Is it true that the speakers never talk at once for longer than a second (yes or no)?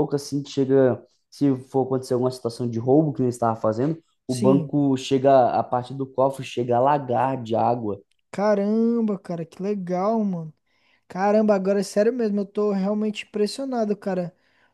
yes